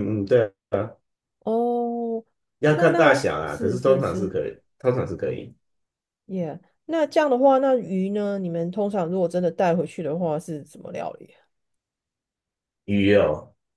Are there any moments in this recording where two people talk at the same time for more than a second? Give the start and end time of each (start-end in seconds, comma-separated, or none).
2.7-4.3